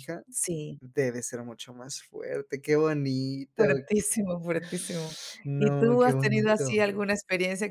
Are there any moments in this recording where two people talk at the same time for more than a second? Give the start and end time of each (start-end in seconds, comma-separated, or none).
5.5-6.7